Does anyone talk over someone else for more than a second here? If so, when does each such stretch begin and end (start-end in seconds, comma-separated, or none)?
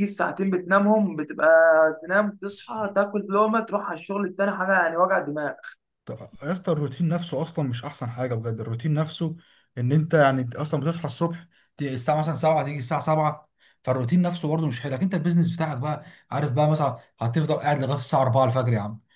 none